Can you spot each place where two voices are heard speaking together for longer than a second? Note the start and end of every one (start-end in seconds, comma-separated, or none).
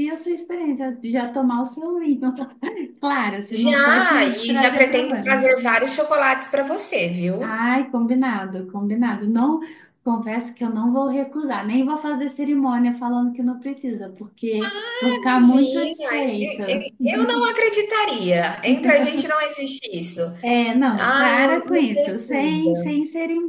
3.5-5.5, 14.6-16.9, 20.9-22.9